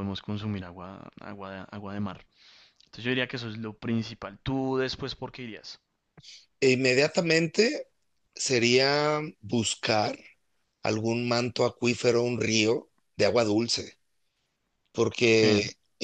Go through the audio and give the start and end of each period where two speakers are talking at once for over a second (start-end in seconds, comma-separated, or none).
none